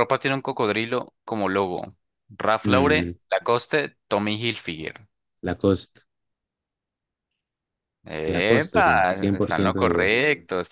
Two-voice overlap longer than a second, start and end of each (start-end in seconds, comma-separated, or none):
8.3-10.1